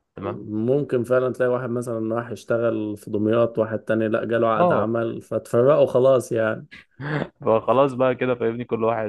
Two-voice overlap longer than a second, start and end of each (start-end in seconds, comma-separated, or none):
none